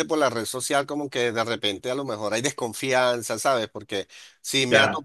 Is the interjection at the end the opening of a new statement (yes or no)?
no